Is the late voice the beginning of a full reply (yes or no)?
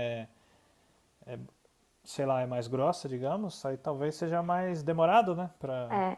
yes